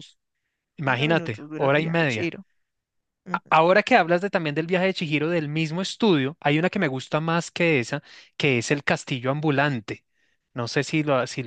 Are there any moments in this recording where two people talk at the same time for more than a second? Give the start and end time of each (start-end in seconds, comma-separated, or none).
0.8-2.3